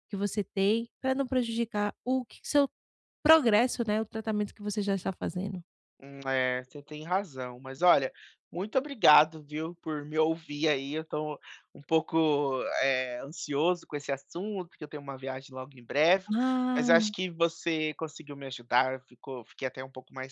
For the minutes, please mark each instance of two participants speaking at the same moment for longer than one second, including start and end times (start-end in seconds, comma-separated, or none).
none